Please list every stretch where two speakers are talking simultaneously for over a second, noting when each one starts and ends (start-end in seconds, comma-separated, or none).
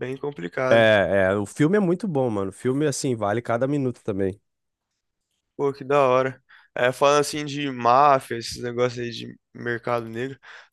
none